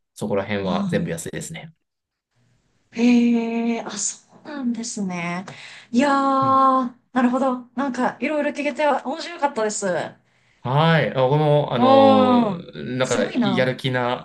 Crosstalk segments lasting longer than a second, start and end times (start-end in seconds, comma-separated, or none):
11.8-13.7